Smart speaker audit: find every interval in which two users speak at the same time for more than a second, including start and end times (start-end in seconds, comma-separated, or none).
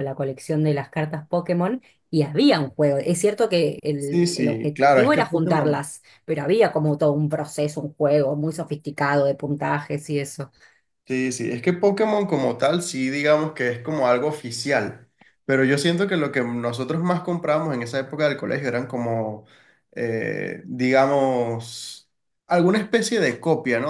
4.0-5.8